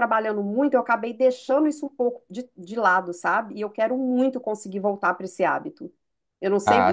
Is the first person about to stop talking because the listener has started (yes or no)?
yes